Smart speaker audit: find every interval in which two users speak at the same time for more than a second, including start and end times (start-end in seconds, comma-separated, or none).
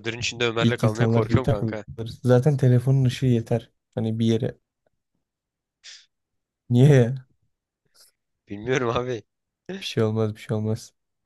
0.6-1.8